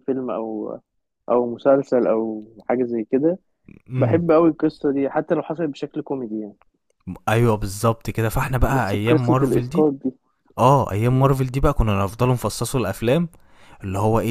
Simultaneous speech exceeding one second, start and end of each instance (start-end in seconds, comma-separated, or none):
8.7-9.9